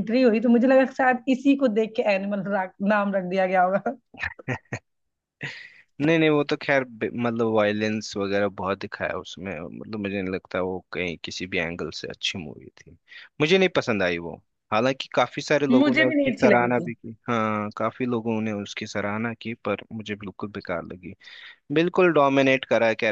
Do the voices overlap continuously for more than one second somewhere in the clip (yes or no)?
yes